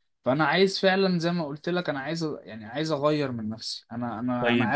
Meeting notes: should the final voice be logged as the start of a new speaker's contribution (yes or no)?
yes